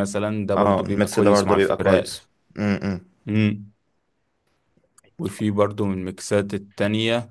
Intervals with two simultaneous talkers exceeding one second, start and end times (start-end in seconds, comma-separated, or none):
0.6-2.2